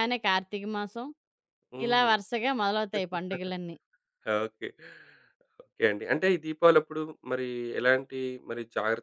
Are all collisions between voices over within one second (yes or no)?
yes